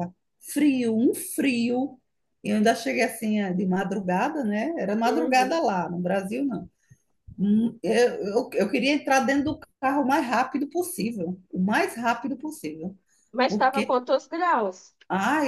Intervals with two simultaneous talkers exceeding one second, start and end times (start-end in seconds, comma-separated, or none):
none